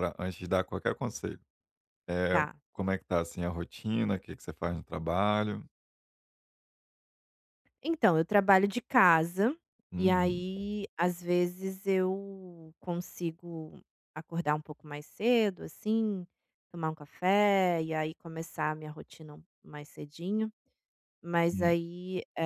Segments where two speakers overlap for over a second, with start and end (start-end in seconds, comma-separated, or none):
none